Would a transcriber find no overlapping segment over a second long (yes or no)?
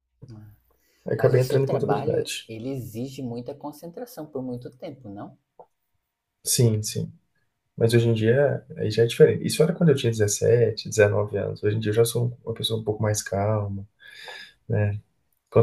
no